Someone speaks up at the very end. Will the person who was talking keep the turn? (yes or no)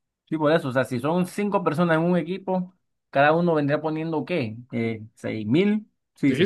no